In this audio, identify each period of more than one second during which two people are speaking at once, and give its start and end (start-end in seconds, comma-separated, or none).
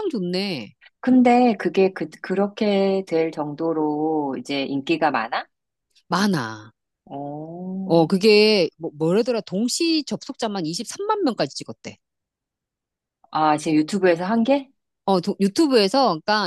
none